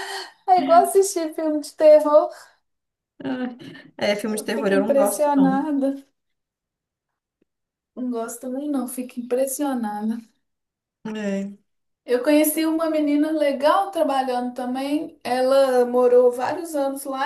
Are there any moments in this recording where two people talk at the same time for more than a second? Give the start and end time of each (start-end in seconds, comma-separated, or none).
4.2-5.7